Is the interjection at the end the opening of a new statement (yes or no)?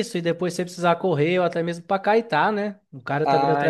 yes